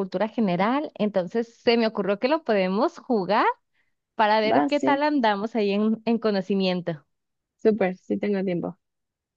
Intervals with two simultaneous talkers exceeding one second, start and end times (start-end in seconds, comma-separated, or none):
none